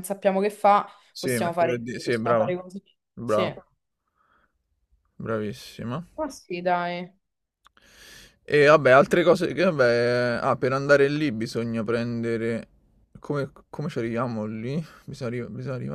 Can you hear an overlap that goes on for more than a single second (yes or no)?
yes